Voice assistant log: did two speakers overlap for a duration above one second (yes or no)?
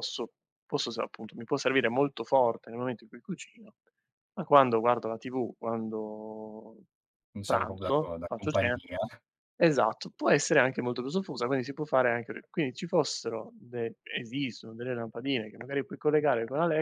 yes